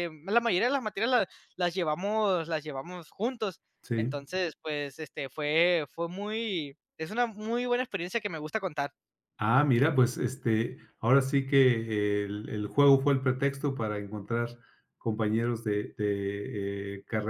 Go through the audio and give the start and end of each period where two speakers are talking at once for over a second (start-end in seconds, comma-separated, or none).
none